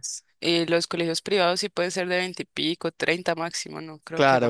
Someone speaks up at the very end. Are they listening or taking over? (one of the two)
taking over